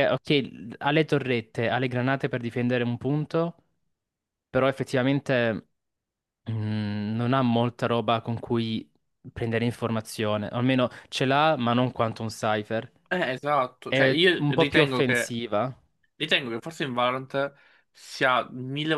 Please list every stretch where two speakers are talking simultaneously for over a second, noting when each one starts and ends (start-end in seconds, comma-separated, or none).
13.9-15.3